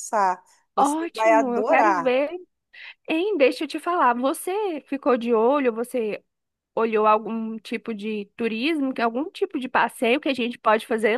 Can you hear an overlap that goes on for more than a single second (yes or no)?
yes